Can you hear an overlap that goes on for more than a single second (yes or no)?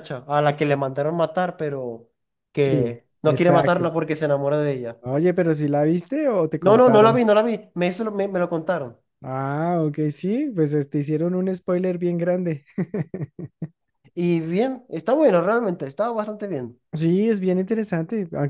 yes